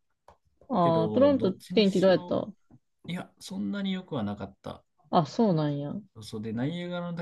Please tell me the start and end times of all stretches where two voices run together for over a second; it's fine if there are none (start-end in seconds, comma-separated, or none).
0.8-2.4